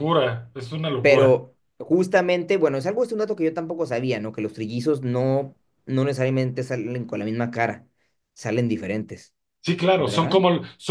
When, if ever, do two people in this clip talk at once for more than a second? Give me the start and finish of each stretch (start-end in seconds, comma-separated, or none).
none